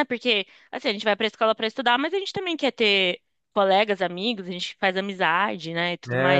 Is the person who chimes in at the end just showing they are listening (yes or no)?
no